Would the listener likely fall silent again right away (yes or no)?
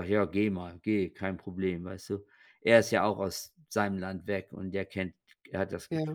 yes